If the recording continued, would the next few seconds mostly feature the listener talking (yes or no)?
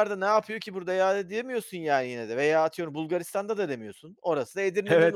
yes